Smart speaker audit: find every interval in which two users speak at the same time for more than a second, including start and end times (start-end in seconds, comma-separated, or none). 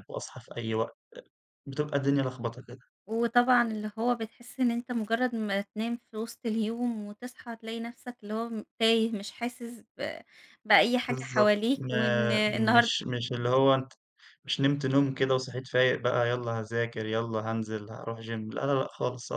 11.1-12.9